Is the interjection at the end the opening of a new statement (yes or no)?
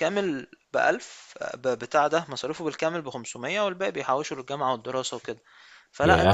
yes